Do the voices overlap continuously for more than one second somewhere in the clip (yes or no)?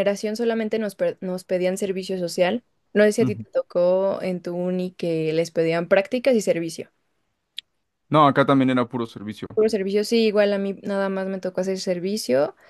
no